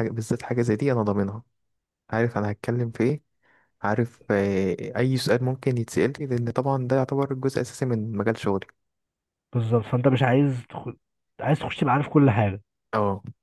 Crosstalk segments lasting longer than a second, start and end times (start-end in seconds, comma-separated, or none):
none